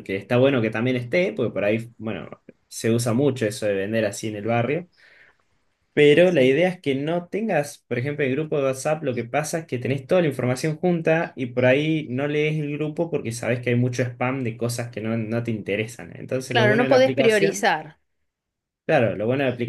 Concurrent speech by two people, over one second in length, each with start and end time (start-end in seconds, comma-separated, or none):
16.5-17.7